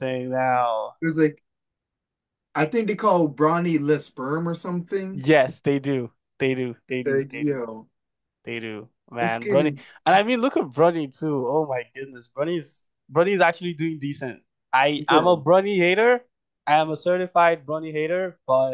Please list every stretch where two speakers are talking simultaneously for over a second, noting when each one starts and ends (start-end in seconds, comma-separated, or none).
none